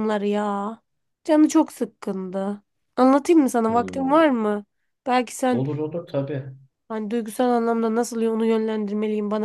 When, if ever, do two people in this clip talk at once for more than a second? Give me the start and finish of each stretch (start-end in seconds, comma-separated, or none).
none